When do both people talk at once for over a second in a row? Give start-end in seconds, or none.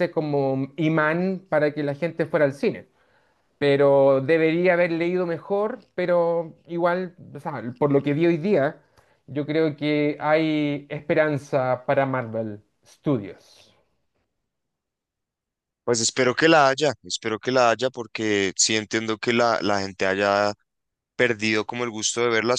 none